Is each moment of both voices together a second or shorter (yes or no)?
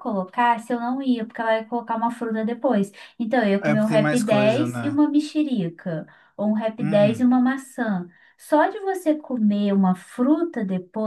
no